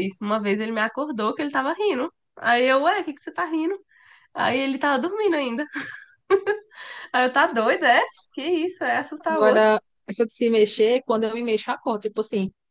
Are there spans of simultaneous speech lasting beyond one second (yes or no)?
no